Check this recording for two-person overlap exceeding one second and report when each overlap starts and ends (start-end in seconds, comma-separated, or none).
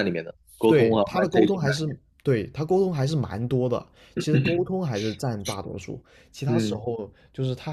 0.7-2.0